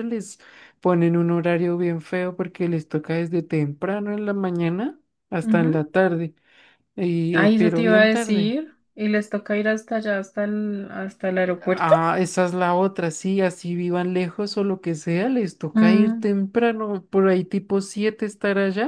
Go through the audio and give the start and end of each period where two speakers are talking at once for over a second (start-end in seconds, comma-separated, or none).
7.3-8.5